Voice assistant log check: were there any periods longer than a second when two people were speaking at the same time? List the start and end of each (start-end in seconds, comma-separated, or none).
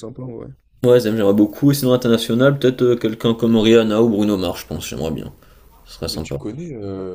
none